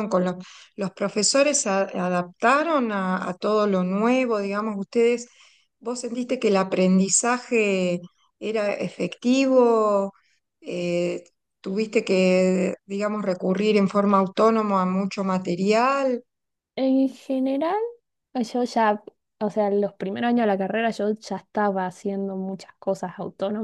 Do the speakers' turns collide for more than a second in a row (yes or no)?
no